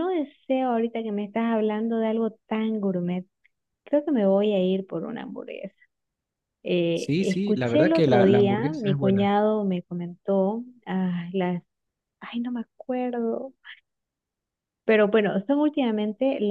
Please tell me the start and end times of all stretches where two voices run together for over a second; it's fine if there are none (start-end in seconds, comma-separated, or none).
6.9-9.3